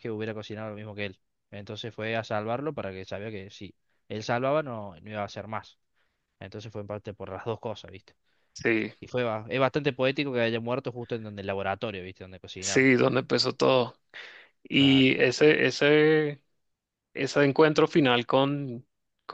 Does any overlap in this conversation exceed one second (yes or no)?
no